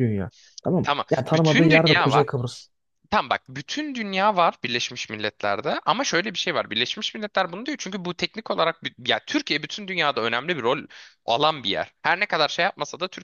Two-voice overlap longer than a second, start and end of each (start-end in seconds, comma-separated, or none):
0.8-2.2